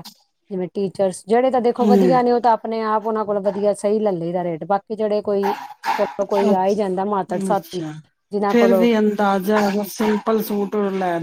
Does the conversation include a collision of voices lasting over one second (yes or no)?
no